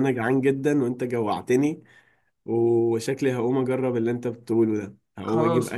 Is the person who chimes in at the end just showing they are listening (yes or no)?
yes